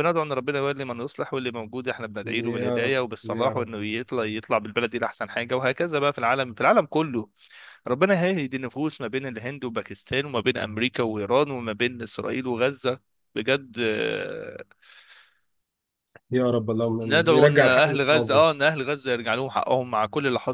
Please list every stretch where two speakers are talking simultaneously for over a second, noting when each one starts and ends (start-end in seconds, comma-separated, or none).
2.5-3.7, 17.1-18.5